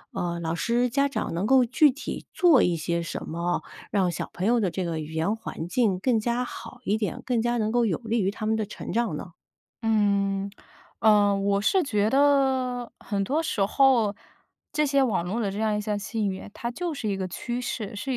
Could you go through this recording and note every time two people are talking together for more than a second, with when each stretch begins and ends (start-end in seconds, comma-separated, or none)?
none